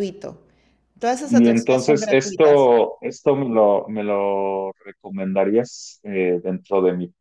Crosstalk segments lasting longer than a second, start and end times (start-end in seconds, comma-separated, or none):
1.3-2.7